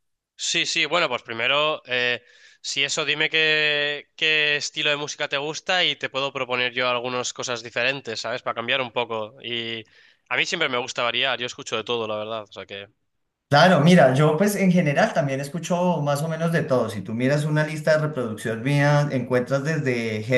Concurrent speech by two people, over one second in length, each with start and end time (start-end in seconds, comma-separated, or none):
none